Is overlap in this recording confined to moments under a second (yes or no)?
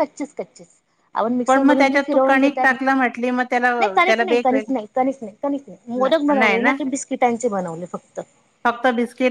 no